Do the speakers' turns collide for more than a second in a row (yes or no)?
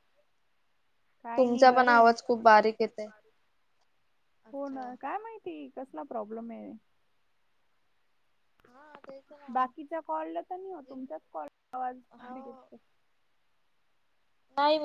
yes